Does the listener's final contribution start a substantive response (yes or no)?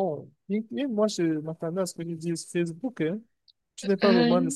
no